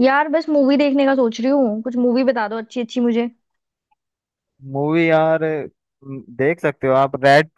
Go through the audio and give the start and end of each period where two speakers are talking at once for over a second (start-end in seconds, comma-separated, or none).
none